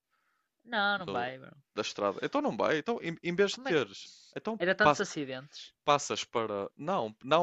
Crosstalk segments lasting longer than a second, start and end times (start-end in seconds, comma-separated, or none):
none